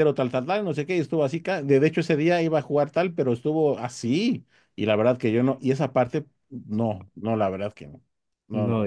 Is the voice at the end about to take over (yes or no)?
yes